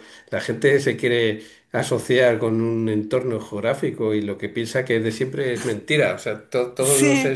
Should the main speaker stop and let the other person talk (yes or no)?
no